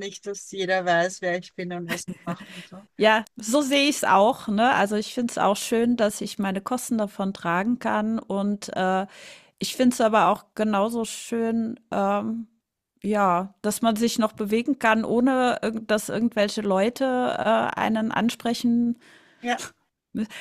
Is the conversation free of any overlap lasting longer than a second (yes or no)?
yes